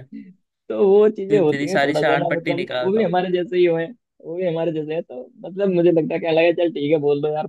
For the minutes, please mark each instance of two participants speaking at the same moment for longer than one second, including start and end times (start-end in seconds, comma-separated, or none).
1.3-3.1